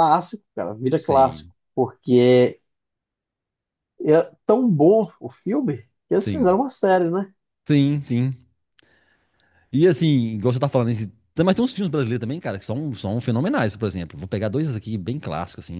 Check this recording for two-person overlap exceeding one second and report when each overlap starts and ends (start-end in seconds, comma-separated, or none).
none